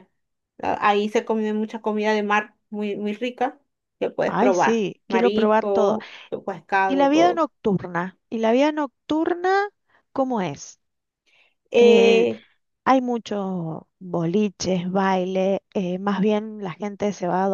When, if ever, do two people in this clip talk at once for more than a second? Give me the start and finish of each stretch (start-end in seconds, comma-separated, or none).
4.2-6.0